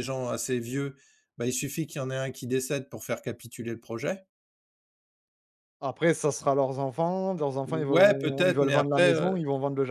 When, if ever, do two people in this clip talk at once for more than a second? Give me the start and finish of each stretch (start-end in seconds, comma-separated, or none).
7.7-9.4